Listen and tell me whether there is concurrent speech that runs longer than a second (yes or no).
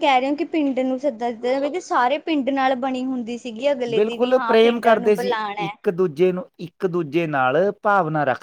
yes